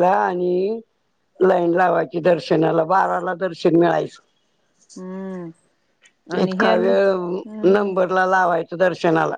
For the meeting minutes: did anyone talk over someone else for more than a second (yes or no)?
yes